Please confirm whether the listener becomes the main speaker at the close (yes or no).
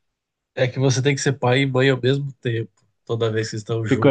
yes